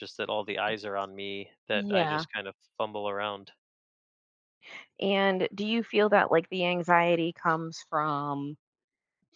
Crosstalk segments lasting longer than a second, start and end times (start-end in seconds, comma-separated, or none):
none